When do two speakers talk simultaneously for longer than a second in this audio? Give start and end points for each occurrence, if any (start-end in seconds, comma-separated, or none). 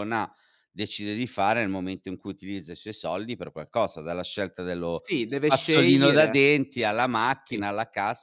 4.9-6.5